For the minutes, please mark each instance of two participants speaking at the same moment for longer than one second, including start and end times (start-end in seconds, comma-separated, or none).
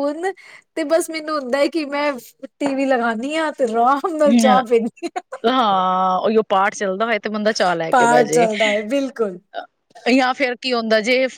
none